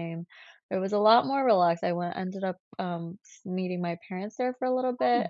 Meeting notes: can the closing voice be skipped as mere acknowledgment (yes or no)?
yes